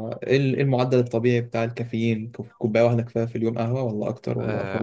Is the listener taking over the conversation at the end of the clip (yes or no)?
yes